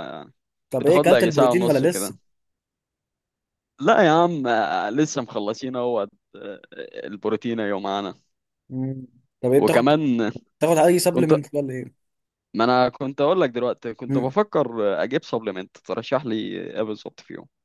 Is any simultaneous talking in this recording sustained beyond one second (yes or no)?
yes